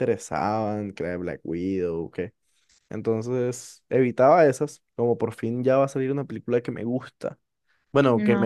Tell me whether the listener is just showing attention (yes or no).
yes